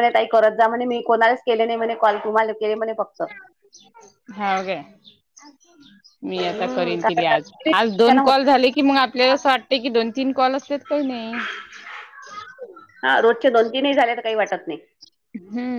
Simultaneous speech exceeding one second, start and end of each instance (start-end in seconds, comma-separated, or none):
6.4-8.3